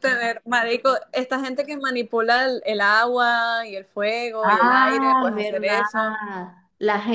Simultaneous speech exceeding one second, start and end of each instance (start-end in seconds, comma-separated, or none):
4.4-5.8